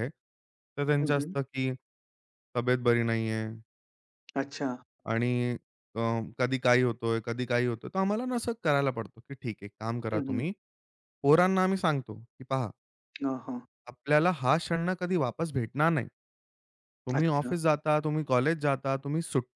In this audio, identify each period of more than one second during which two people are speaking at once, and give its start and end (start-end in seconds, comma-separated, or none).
none